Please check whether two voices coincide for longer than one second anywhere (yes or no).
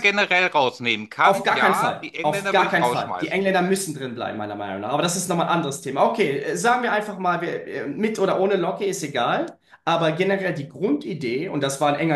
yes